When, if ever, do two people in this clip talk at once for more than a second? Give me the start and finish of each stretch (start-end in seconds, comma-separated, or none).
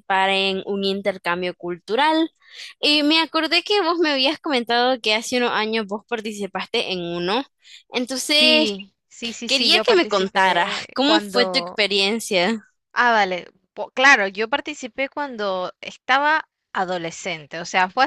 9.4-11.8